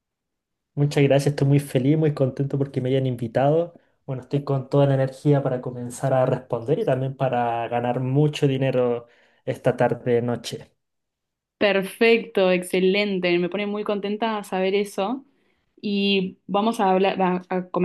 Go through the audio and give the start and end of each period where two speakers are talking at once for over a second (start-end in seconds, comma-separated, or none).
none